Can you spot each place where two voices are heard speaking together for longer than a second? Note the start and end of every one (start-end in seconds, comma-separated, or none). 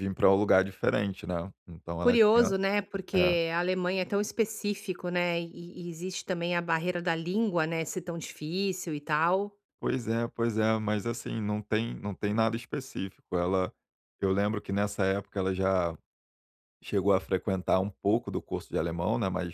none